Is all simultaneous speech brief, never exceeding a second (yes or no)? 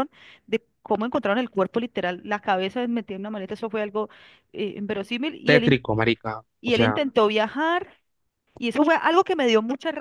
yes